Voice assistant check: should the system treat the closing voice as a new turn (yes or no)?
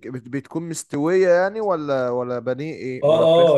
yes